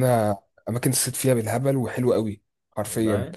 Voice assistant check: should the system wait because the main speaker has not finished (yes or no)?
yes